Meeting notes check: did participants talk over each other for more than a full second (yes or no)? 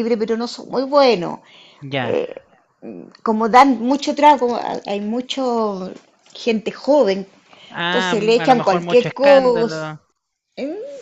yes